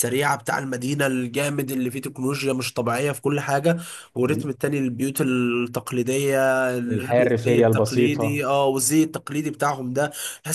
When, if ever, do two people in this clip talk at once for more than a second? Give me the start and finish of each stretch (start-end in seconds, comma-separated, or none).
6.9-8.5